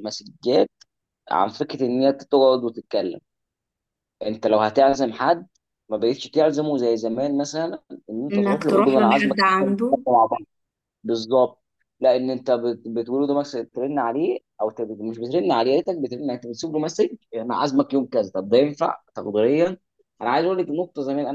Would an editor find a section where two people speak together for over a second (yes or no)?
yes